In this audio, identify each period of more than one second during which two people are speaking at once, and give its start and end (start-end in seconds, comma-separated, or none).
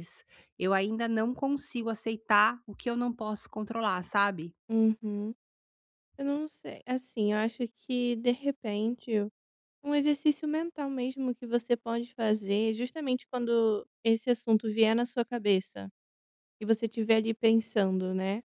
none